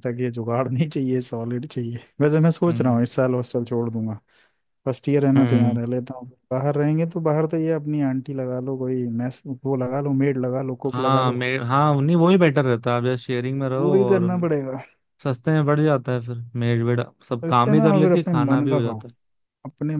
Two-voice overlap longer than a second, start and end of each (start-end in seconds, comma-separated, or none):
17.4-19.0